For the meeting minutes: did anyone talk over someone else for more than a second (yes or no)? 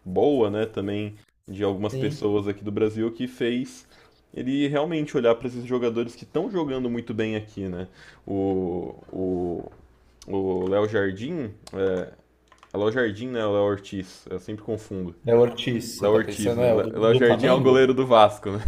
yes